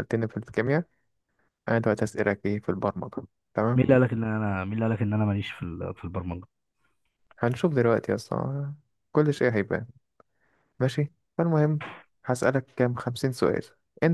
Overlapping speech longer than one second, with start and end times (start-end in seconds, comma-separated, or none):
none